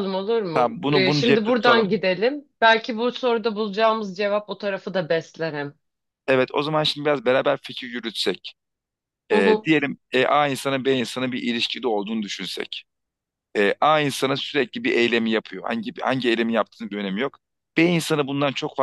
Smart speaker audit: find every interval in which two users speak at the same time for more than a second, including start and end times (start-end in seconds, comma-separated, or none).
0.5-2.0